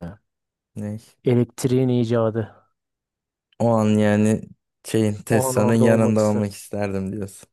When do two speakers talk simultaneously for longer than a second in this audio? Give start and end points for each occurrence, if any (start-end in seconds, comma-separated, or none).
5.3-6.5